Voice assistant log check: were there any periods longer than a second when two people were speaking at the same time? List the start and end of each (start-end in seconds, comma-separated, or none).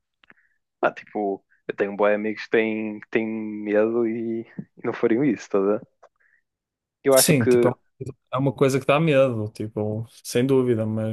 none